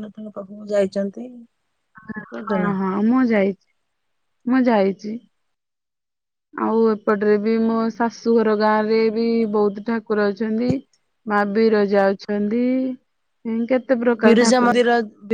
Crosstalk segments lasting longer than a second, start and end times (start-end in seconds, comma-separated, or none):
none